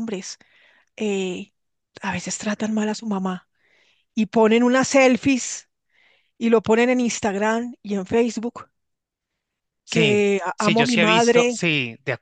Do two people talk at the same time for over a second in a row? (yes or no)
yes